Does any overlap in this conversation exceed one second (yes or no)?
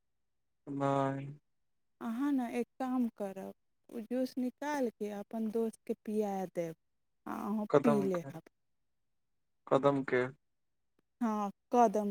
no